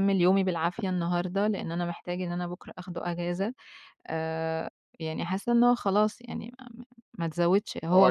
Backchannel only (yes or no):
no